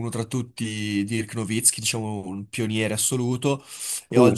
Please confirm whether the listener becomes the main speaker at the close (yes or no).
no